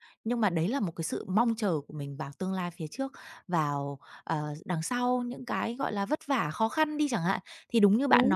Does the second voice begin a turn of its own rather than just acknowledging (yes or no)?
no